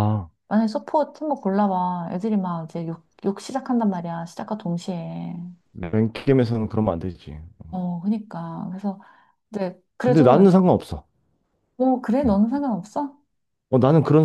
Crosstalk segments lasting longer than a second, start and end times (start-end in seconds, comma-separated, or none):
none